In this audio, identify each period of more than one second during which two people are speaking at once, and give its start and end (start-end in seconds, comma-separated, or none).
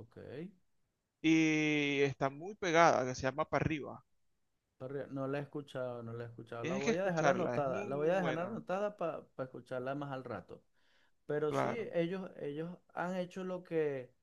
6.6-8.6